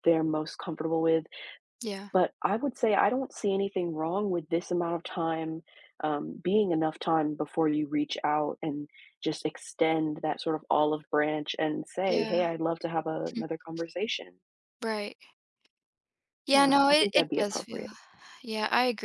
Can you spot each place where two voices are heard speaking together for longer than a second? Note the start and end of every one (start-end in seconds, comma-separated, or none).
16.5-17.9